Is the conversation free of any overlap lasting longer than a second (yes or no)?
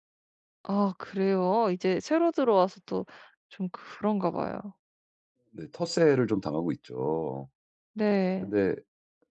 yes